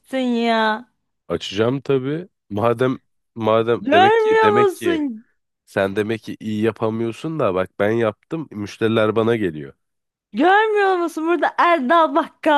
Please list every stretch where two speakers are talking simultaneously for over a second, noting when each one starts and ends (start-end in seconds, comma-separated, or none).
3.8-5.0